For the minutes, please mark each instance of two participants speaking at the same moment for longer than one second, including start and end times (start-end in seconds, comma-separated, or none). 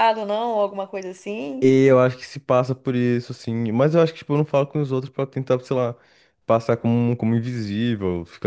none